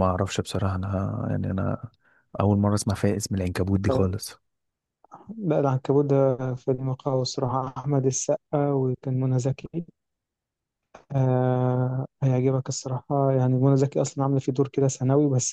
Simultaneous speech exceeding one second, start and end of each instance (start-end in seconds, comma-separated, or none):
none